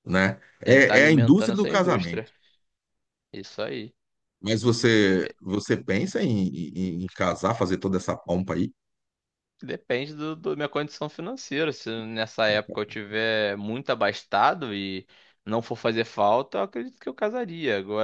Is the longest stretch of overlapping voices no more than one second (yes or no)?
no